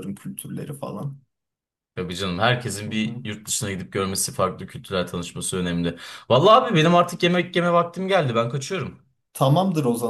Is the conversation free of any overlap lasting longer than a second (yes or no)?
yes